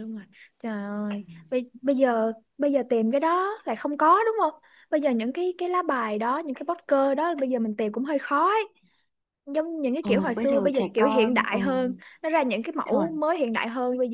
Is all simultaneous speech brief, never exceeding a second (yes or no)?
no